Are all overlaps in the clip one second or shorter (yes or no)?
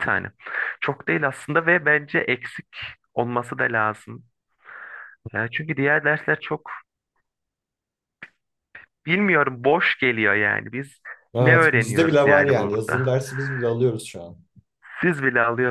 no